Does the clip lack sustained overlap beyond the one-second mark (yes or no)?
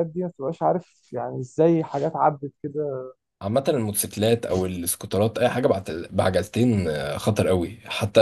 yes